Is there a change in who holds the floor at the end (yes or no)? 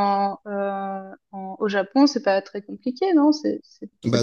yes